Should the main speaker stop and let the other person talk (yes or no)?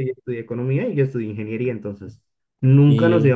no